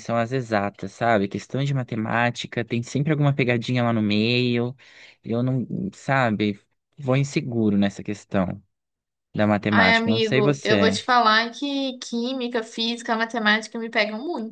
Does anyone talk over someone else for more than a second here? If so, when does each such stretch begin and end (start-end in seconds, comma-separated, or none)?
9.7-10.9